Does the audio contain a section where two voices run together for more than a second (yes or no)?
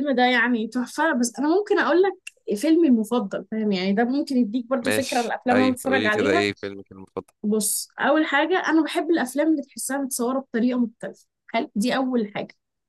yes